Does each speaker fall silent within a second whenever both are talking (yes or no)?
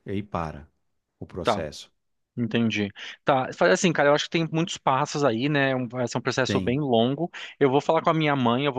yes